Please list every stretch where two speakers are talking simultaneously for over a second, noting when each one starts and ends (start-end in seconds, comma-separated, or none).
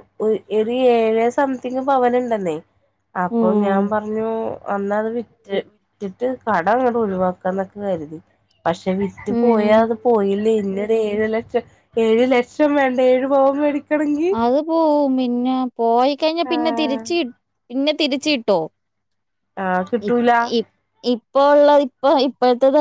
none